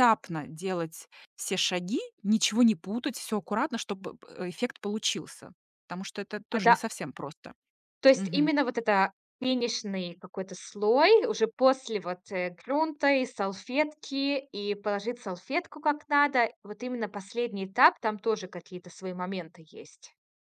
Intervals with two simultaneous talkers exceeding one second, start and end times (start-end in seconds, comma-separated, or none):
none